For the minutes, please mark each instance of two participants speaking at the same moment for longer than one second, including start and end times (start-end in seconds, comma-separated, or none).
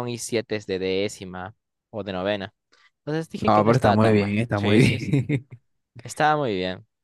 3.4-4.8